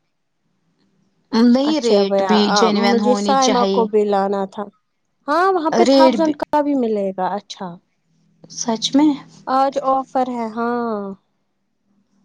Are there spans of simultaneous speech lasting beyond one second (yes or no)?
yes